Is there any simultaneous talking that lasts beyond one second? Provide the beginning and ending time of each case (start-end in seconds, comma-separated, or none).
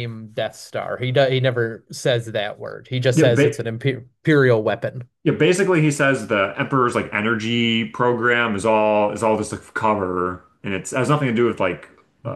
none